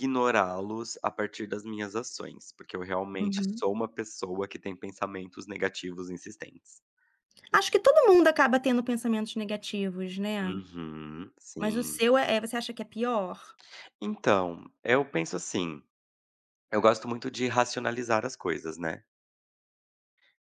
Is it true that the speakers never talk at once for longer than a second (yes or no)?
yes